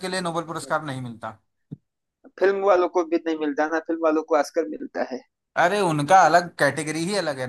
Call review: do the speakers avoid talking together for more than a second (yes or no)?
yes